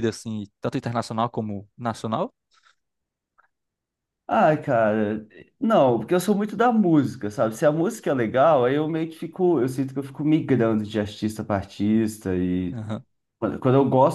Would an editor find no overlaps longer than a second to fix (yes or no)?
yes